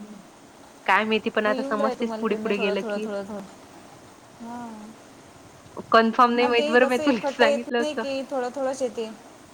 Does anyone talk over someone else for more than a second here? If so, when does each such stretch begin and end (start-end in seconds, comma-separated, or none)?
6.4-8.0